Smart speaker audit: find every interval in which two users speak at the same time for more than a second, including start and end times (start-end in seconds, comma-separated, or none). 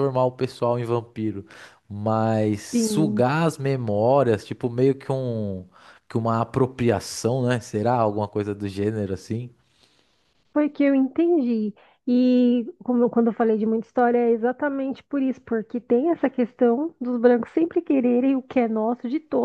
none